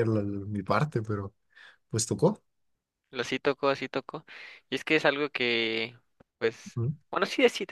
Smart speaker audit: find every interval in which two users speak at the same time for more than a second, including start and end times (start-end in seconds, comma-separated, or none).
none